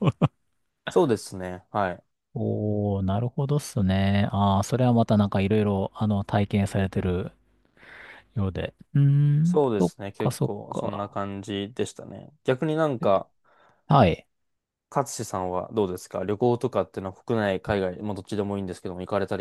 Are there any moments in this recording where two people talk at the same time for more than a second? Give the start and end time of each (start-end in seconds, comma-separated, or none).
9.4-11.2